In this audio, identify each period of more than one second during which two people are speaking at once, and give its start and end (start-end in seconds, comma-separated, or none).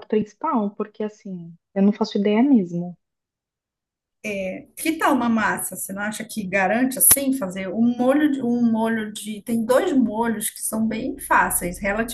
none